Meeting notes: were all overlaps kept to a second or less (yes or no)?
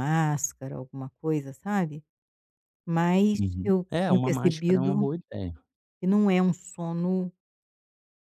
no